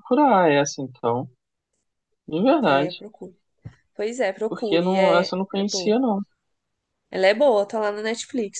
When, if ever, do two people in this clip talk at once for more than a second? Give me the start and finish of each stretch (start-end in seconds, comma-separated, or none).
4.5-6.0